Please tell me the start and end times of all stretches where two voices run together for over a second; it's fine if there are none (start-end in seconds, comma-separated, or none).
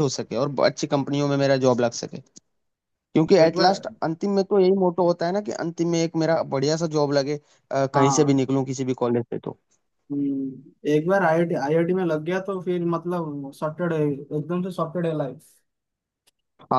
none